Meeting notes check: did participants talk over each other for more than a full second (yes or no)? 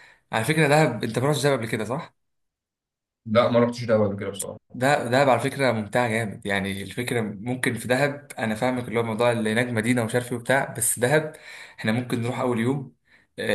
no